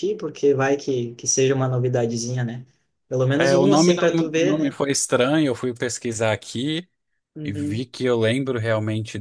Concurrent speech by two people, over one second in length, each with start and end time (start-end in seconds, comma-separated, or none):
3.3-4.8